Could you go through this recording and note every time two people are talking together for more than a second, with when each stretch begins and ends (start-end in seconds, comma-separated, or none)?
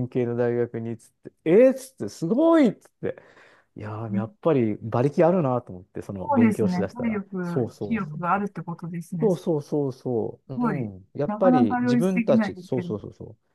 6.2-8.5, 10.6-12.9